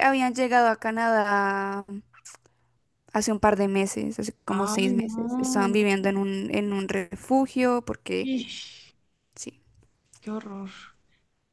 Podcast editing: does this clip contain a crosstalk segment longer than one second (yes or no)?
yes